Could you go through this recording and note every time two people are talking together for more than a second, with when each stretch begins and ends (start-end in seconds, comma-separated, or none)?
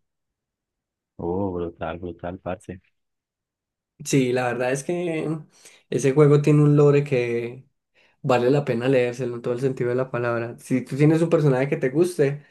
none